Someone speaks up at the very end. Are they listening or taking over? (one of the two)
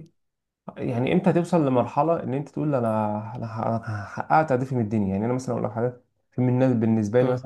listening